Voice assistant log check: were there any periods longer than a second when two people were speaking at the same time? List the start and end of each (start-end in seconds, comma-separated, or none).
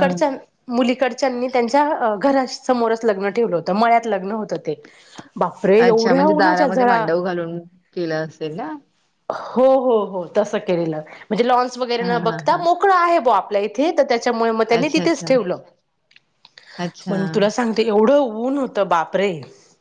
5.8-7.0